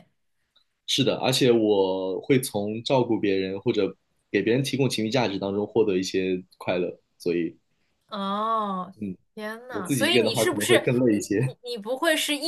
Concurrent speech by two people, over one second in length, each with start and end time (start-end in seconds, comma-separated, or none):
9.7-11.5